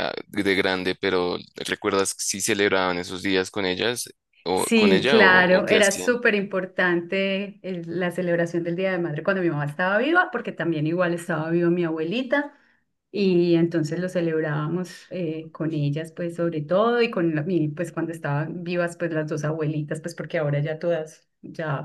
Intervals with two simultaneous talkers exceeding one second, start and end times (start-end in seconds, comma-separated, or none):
4.5-6.1